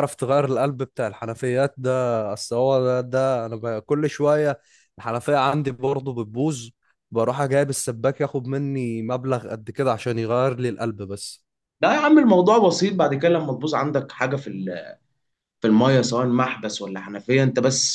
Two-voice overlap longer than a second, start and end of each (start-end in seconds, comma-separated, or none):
none